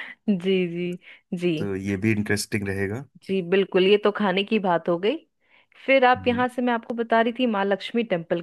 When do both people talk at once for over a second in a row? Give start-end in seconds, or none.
none